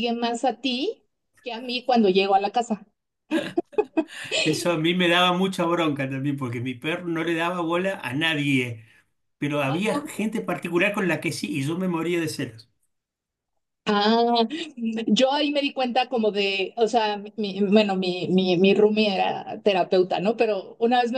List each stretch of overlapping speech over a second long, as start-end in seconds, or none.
none